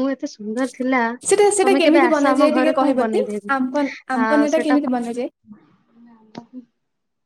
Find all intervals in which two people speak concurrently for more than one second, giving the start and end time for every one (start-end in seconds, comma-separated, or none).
1.6-3.2